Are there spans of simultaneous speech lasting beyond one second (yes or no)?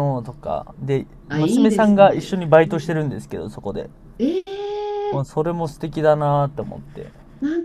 yes